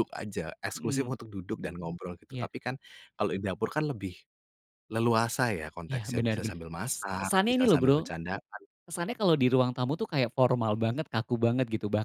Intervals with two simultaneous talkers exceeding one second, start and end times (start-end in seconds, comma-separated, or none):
5.9-8.0